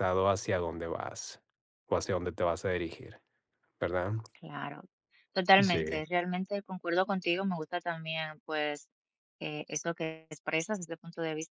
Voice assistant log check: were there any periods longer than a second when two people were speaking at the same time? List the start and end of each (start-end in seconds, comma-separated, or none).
none